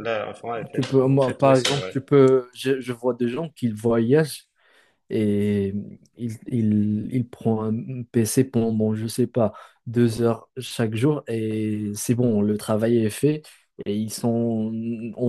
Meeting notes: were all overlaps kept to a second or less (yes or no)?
no